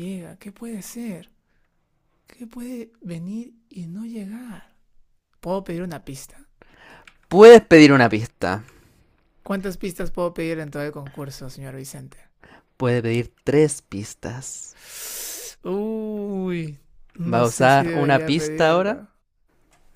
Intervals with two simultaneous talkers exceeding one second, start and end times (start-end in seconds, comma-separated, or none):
17.2-19.0